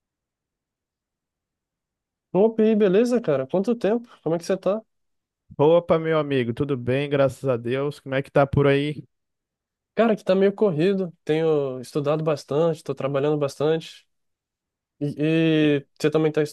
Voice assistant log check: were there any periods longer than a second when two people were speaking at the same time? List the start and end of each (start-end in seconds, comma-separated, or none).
none